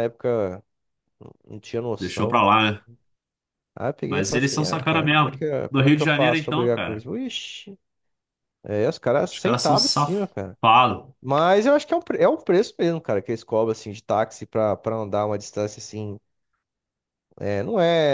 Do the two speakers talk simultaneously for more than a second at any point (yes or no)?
yes